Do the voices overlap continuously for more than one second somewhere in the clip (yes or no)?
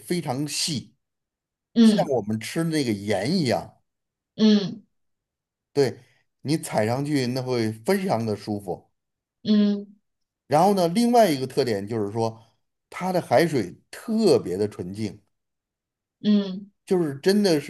no